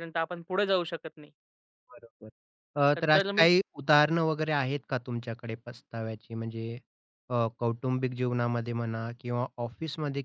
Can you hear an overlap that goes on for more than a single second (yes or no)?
no